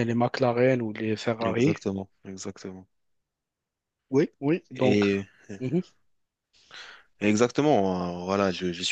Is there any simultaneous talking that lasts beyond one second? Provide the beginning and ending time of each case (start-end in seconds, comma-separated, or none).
none